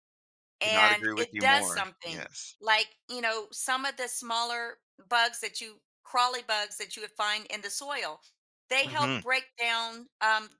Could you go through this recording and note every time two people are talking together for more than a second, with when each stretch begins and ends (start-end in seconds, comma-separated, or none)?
0.6-2.6